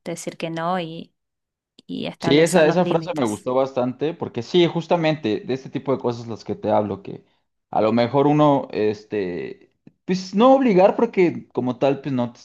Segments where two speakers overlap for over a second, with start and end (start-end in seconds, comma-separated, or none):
2.2-3.5